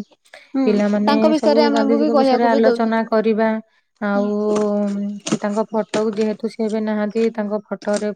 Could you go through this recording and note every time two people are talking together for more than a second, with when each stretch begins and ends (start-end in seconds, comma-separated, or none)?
1.1-3.2